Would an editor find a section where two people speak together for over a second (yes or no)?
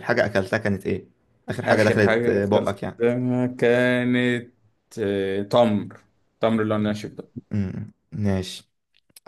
yes